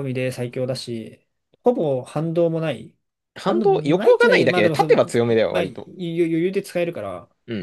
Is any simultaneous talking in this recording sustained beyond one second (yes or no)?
yes